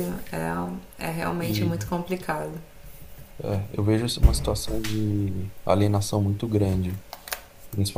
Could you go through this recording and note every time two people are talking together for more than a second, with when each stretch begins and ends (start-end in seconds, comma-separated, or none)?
none